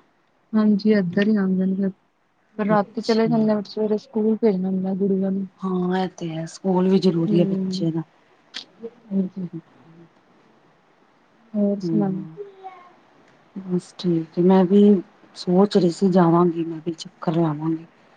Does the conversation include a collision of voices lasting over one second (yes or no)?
no